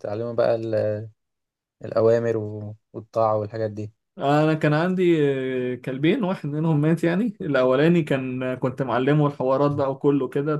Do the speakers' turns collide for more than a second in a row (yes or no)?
no